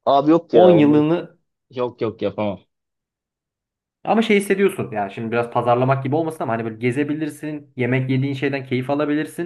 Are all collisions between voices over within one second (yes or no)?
yes